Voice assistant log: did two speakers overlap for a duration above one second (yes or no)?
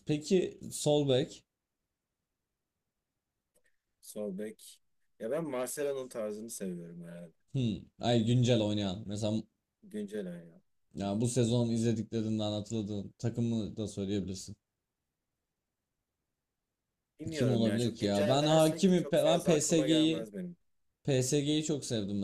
yes